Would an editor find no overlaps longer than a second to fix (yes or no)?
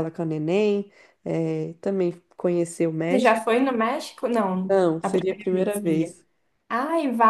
no